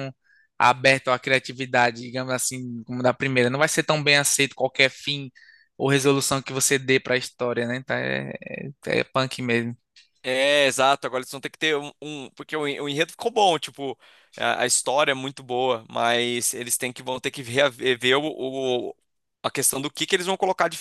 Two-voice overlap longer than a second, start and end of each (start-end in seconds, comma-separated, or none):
none